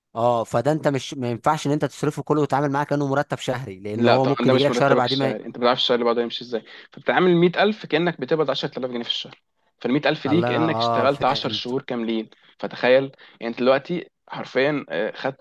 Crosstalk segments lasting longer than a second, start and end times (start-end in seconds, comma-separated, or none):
4.0-5.4, 10.3-11.7